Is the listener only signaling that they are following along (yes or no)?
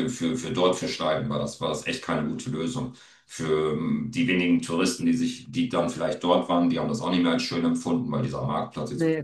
yes